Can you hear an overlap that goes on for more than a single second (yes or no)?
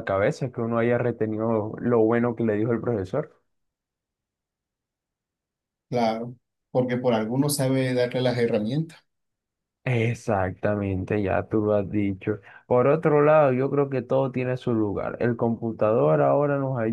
no